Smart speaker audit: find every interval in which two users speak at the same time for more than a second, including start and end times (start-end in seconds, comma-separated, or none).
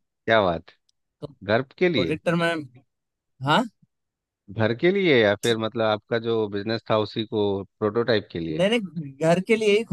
none